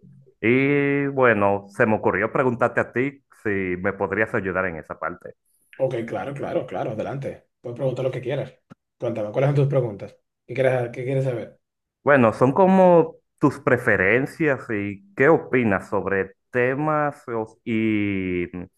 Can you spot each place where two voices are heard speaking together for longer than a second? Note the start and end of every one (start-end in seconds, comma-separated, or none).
none